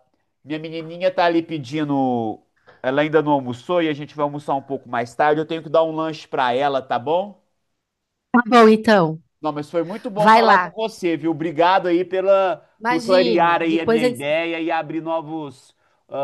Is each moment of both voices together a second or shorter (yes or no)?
no